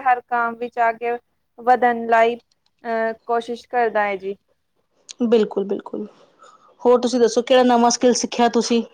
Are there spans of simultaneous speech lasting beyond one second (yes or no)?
no